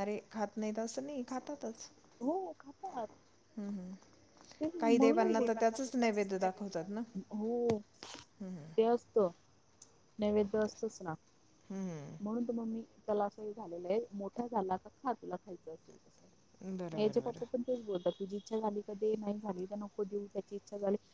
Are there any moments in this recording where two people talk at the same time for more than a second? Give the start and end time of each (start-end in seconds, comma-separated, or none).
4.8-7.0